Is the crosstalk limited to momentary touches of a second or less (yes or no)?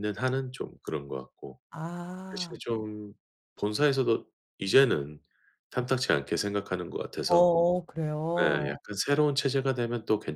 yes